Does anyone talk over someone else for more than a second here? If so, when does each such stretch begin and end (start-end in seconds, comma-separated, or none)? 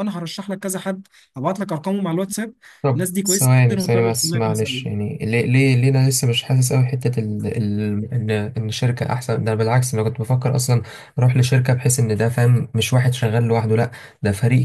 2.9-5.0